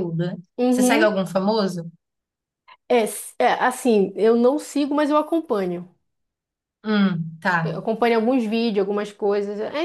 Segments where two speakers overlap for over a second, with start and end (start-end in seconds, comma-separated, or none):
none